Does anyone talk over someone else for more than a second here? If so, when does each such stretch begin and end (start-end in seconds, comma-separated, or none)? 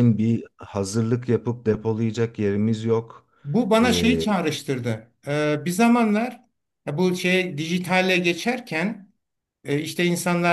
none